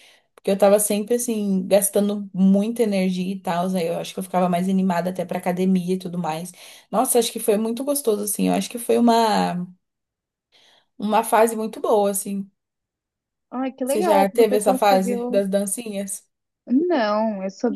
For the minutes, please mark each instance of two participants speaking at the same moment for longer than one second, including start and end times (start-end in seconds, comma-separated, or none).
13.8-15.4